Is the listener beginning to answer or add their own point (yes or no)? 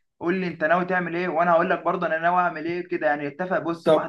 no